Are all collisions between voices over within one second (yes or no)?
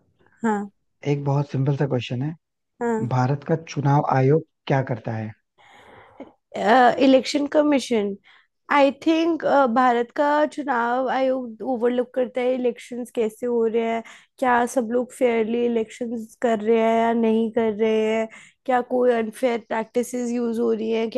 yes